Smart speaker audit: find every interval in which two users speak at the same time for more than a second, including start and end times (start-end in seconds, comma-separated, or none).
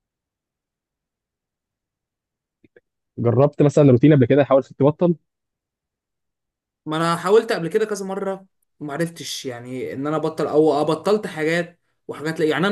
none